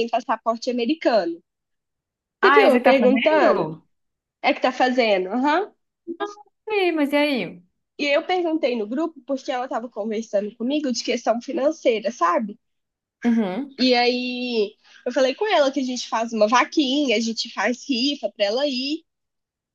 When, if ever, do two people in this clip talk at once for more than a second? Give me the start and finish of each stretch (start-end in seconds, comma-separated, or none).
2.4-3.7